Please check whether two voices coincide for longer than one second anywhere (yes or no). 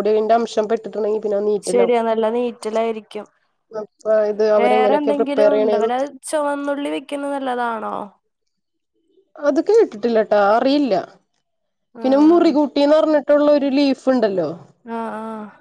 yes